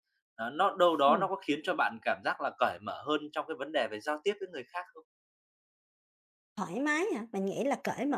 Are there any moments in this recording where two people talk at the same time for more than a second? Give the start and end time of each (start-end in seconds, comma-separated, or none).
none